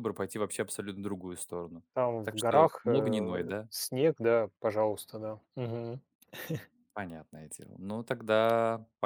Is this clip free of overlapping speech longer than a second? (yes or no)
no